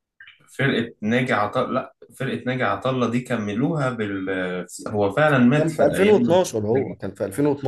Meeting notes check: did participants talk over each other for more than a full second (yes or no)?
yes